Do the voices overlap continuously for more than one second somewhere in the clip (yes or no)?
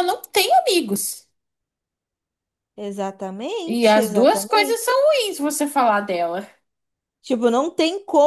yes